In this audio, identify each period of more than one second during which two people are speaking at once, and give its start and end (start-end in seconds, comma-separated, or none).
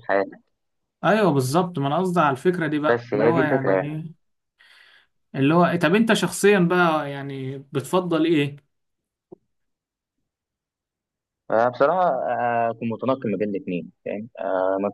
2.9-4.1